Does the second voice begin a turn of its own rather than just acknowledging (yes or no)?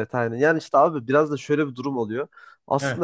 no